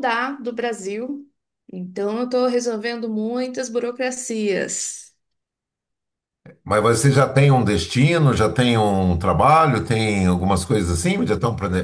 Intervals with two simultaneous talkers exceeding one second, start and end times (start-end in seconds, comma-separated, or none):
none